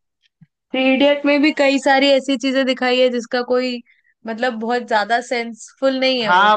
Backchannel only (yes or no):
no